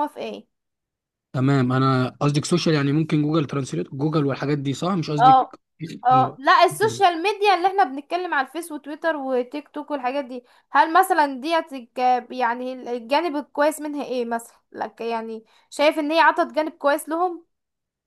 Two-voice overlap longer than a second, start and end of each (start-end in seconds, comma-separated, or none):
none